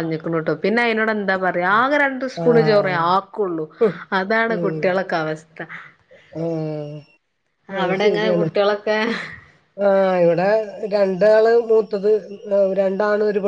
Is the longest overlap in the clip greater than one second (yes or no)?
no